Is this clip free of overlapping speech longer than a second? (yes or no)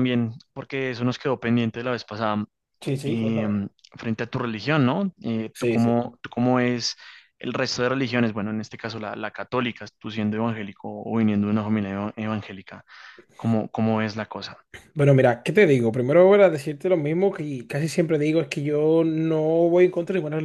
yes